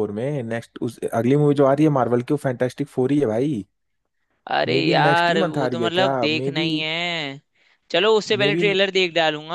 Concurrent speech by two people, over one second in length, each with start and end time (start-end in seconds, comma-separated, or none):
4.7-6.7